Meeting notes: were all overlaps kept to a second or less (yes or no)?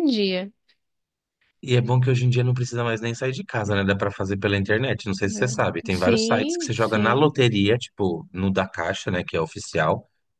no